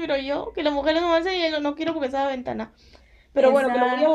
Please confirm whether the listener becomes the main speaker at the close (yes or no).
no